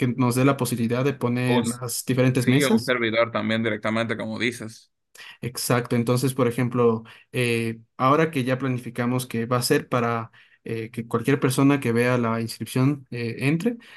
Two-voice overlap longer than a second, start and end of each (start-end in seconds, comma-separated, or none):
none